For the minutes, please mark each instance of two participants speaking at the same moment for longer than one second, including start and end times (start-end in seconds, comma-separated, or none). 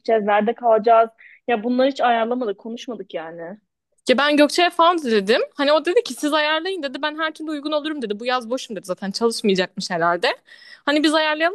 none